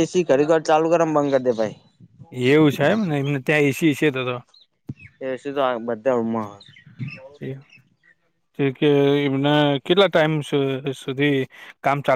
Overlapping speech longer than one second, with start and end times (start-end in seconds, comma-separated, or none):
none